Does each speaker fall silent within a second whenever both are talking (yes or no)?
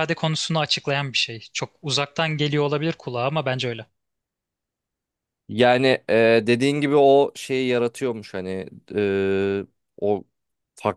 yes